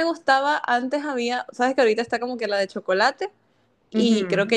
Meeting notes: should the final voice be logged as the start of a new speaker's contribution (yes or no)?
no